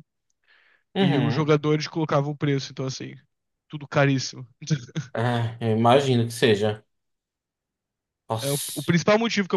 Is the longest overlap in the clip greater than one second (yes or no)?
no